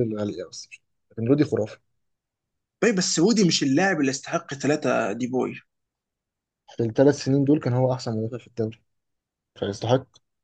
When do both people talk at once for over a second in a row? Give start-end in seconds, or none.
none